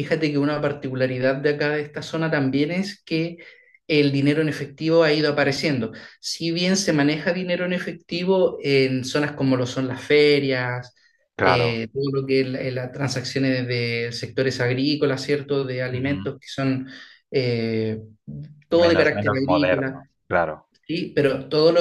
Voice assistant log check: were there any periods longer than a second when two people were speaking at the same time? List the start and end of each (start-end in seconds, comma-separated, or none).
18.8-20.1